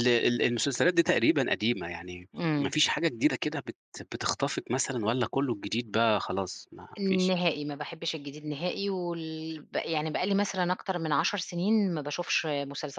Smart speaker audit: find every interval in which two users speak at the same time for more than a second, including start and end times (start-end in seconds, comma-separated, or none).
none